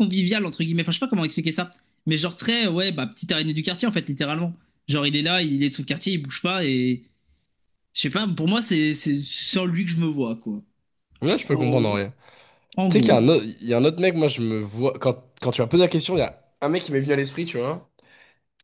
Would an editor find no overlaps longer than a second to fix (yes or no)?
yes